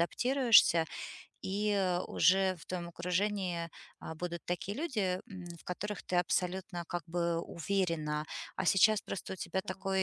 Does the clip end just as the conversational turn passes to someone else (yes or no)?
no